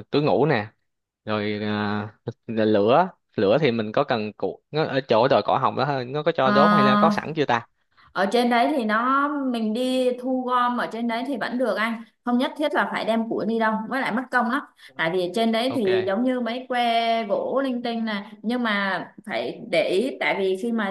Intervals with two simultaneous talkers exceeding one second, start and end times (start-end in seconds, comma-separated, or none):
none